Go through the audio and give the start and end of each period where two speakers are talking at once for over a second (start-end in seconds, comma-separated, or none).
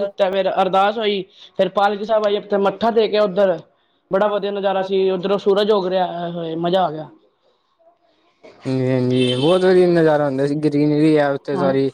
none